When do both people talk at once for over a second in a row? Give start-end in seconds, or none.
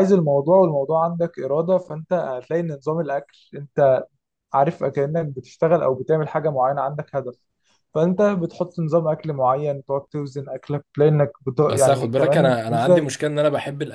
11.6-13.1